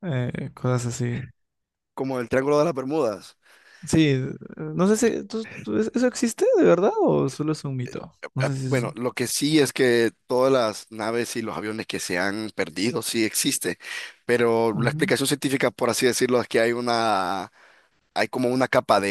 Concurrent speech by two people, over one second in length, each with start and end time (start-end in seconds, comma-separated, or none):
none